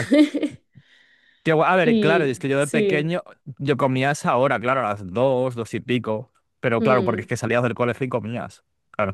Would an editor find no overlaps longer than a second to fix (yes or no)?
no